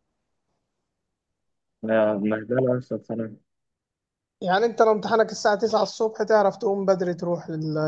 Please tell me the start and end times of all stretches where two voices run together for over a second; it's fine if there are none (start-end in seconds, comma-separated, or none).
none